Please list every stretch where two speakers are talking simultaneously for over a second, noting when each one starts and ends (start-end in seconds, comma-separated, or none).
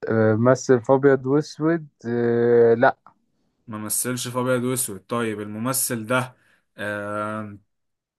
none